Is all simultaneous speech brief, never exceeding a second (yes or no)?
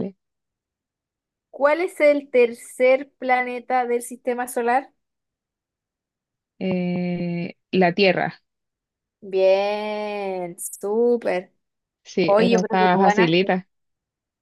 no